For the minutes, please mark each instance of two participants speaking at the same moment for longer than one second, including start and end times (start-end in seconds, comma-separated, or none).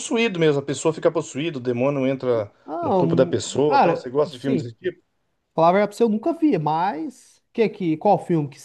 2.6-4.7